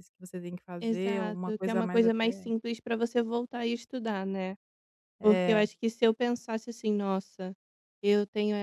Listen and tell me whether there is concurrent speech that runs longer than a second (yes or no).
yes